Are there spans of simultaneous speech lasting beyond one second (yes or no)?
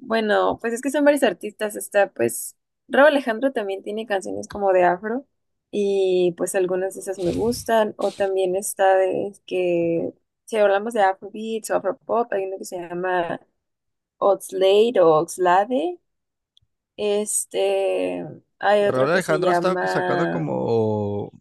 yes